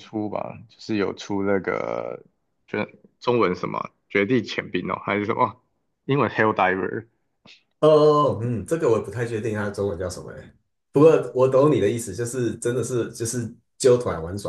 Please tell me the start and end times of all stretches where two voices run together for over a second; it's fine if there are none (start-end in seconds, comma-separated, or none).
none